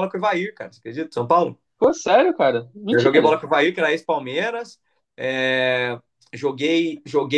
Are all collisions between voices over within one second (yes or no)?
yes